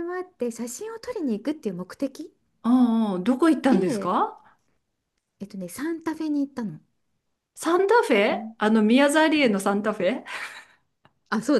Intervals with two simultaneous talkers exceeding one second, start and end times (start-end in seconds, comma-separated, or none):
none